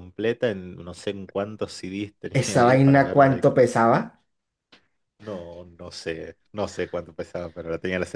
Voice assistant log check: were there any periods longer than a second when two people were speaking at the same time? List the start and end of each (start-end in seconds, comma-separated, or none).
2.3-3.6